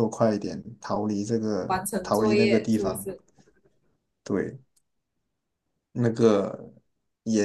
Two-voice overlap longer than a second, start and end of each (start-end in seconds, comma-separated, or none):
1.7-3.1